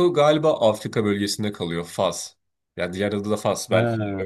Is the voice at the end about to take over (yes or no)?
yes